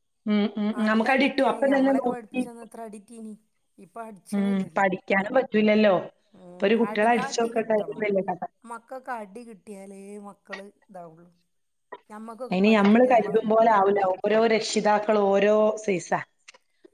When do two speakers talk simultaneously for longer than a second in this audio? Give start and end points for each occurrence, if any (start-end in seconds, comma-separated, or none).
0.8-2.4